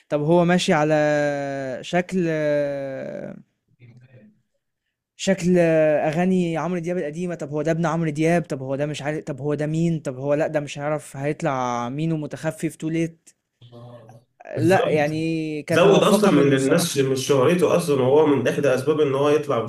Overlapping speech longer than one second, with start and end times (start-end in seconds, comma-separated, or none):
15.7-17.1